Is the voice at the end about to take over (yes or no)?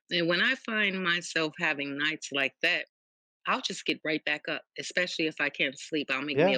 no